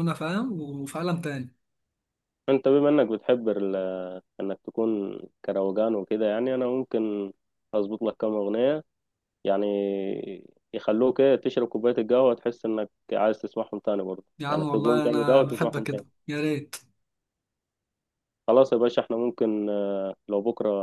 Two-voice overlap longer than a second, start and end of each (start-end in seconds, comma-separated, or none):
14.4-16.0